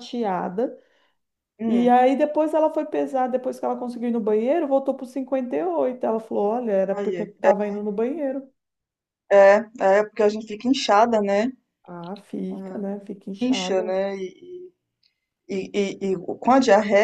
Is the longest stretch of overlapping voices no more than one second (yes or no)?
yes